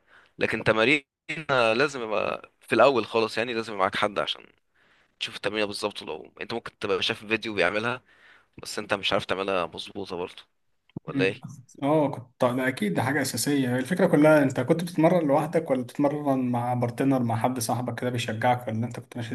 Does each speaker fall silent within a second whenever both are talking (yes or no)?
yes